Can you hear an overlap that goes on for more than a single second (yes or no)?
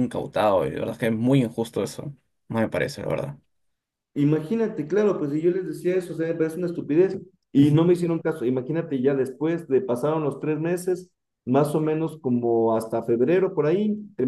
no